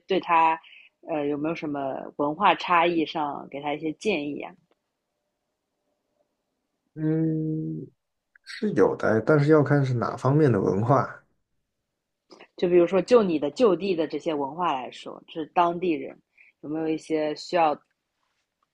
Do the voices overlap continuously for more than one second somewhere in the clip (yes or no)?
no